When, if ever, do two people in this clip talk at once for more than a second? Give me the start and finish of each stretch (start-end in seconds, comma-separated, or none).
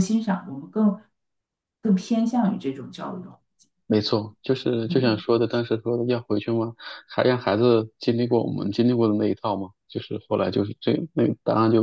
none